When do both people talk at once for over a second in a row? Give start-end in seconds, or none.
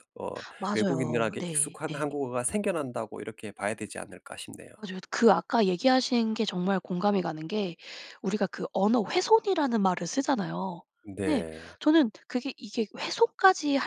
0.7-2.0